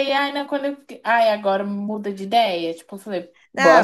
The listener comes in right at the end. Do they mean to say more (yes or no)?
yes